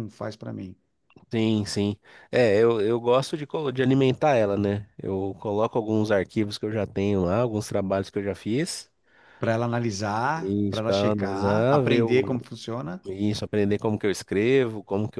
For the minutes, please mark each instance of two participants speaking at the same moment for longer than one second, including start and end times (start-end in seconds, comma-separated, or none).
10.3-12.1